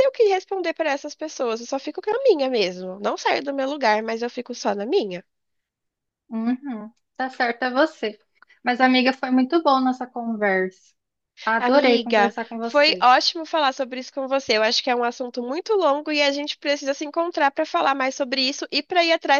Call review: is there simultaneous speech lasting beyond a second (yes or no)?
yes